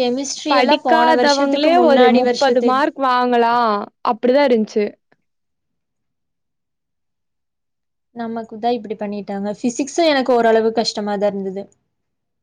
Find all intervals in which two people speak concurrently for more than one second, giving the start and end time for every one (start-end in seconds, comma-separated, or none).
0.5-2.7